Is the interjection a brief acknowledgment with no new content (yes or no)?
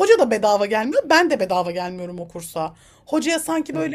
yes